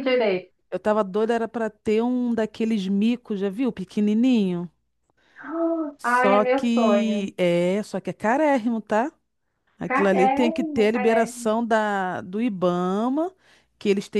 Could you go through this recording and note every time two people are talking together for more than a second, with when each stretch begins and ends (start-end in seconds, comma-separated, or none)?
6.0-7.3, 9.9-11.5